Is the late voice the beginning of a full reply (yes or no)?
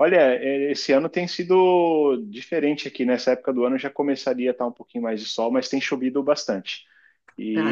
no